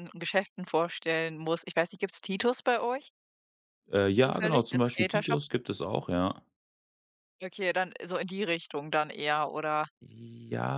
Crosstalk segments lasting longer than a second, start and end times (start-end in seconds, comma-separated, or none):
4.2-5.4